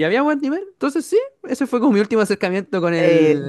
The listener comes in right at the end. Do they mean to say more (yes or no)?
yes